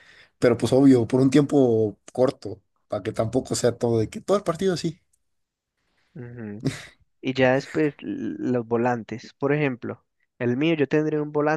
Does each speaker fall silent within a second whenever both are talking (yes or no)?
yes